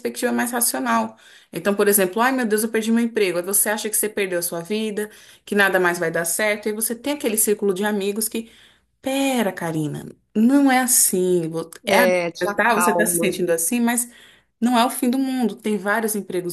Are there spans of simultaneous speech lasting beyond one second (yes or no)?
yes